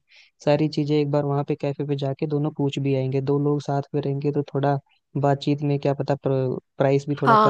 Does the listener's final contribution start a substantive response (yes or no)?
yes